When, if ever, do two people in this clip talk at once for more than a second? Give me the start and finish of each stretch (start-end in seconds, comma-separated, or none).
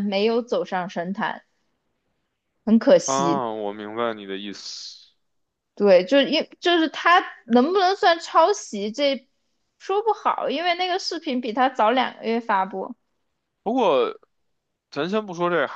none